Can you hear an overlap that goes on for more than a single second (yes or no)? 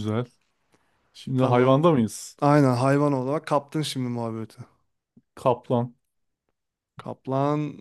no